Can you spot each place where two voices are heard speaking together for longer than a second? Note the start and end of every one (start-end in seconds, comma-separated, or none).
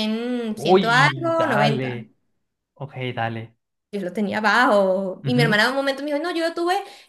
0.5-2.0